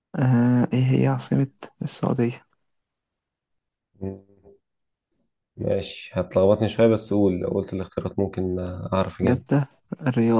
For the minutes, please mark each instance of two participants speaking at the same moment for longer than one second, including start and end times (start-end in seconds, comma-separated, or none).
none